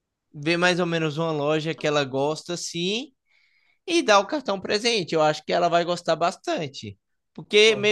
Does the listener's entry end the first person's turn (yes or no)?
no